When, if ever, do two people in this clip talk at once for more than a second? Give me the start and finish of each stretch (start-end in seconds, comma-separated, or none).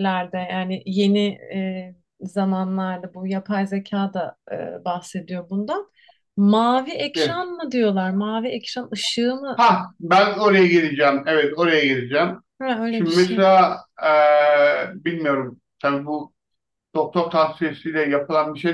none